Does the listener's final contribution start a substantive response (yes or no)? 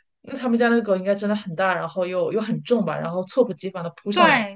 yes